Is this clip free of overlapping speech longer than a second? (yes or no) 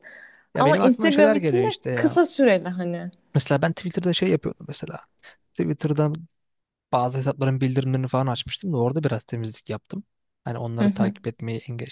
no